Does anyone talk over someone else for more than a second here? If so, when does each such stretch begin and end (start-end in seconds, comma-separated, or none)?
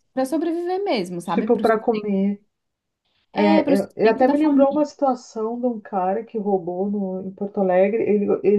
3.3-4.8